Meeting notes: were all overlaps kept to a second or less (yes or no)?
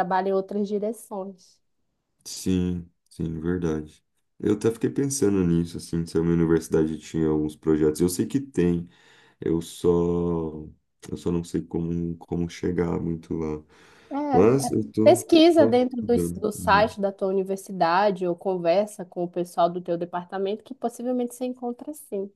no